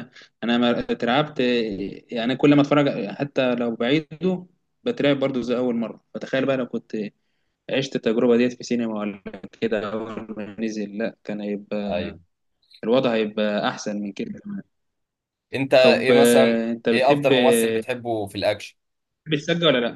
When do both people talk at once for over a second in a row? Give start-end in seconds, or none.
15.8-17.3